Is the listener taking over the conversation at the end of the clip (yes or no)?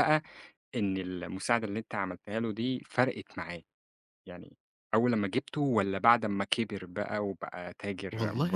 yes